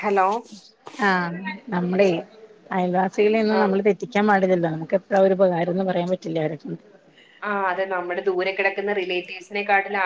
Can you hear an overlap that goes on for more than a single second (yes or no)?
no